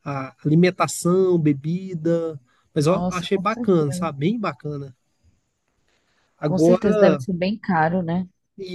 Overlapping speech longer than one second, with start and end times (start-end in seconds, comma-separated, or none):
2.9-4.1